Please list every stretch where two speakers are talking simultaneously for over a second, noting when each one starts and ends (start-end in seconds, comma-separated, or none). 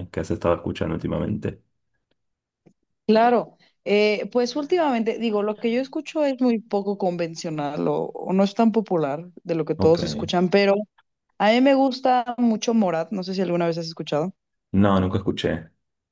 none